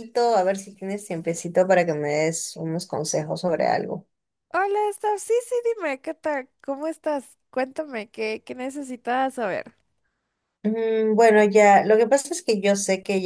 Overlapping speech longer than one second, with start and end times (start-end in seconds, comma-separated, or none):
none